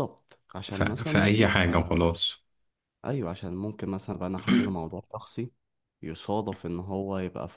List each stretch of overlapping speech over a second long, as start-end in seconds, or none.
0.7-2.0